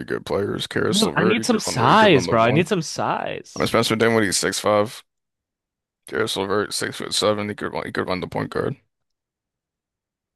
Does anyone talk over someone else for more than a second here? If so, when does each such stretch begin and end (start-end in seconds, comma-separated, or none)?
0.9-2.6